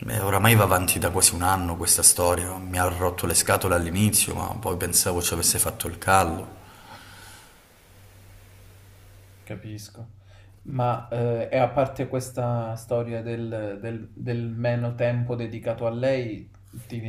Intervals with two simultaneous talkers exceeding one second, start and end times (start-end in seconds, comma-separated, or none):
none